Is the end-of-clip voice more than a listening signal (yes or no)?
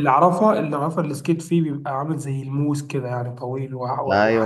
yes